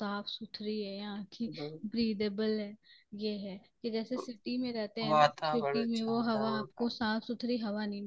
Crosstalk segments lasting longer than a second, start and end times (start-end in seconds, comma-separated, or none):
5.1-6.9